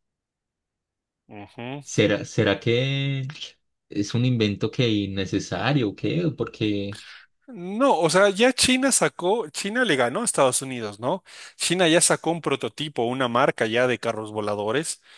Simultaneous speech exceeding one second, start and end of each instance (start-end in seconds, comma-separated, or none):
none